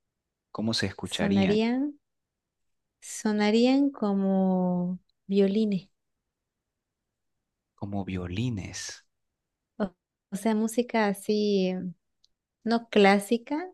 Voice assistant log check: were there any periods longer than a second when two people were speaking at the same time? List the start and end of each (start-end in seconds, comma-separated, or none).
none